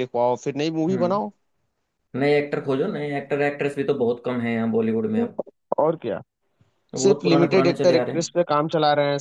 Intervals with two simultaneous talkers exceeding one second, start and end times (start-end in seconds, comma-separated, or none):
7.0-8.3